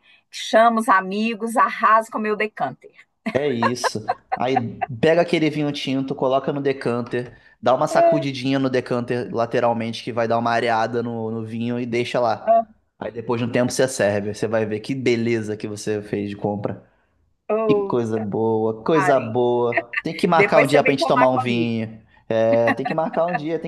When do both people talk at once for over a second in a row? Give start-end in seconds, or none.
20.4-21.8